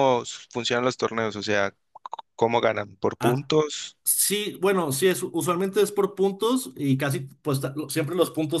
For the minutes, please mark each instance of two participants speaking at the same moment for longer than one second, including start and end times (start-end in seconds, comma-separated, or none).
none